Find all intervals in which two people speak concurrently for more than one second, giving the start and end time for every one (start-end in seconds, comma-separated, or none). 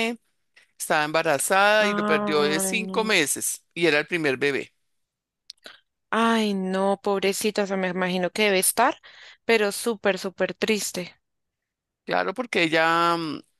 1.8-3.2